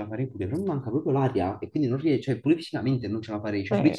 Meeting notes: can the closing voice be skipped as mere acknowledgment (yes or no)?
no